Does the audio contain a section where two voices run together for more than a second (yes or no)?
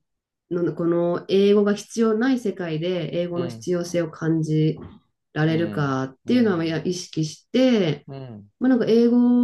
yes